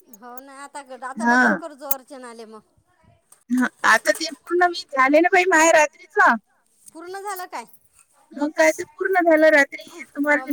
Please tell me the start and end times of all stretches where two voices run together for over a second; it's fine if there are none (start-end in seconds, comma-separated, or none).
none